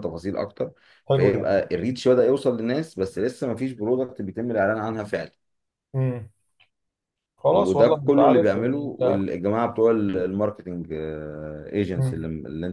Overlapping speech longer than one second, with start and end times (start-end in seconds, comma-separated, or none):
7.5-9.2